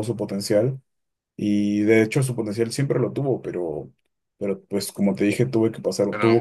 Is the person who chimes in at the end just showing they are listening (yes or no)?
yes